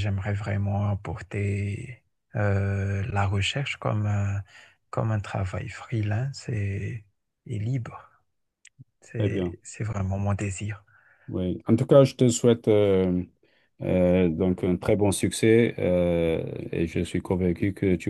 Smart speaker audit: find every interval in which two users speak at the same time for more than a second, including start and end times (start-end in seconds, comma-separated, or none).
none